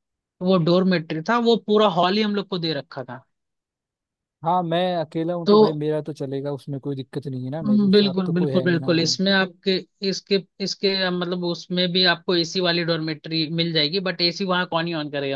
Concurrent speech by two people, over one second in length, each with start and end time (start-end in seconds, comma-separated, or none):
7.7-9.2